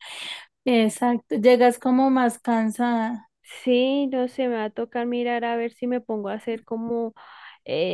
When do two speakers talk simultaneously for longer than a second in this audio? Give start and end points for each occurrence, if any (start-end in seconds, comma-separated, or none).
none